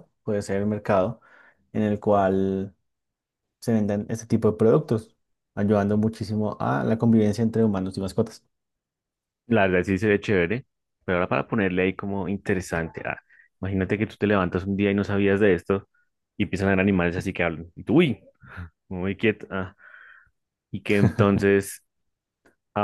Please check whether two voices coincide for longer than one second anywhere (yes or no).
no